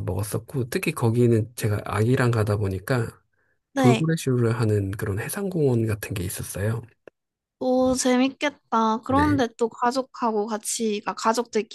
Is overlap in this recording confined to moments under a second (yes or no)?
yes